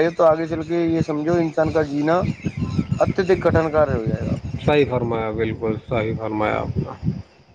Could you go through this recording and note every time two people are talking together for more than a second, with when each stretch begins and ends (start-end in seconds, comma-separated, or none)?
none